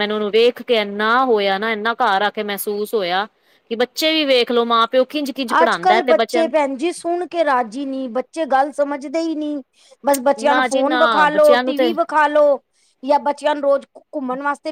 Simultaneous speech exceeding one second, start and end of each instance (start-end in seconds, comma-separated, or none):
10.5-11.9